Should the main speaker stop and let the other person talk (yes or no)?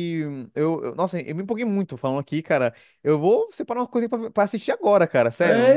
yes